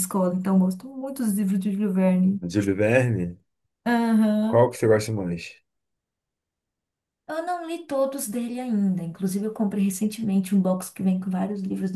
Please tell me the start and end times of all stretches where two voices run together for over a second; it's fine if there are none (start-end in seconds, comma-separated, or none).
none